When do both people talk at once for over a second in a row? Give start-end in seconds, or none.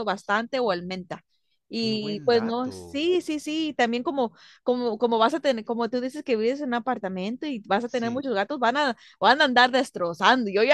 1.8-3.0